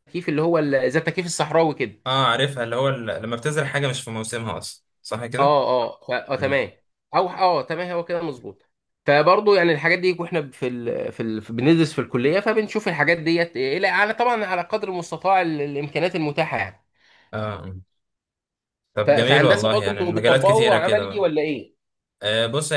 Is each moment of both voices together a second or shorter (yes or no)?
no